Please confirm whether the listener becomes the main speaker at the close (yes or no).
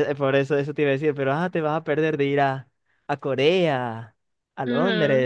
yes